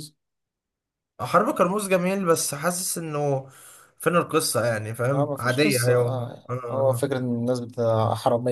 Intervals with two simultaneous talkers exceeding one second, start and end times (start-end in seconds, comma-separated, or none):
5.1-7.1